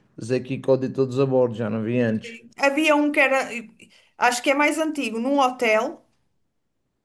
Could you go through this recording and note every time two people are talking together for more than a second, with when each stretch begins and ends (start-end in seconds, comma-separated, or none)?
none